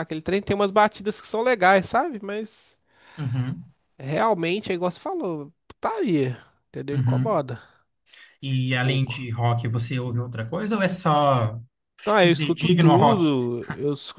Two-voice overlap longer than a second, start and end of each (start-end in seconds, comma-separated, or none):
12.0-13.3